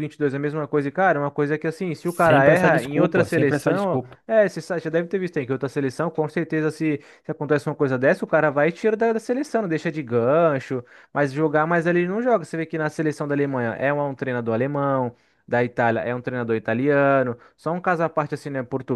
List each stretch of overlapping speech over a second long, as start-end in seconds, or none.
2.0-4.2